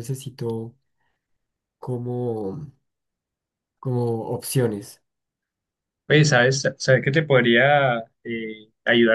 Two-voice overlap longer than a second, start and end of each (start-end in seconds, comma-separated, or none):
none